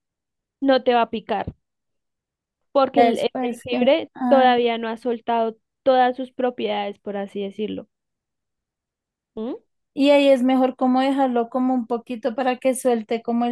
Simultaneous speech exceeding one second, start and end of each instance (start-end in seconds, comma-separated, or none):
2.9-4.5